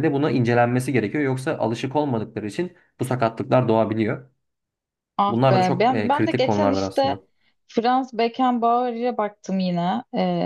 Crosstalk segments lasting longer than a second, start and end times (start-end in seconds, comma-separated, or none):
5.3-7.2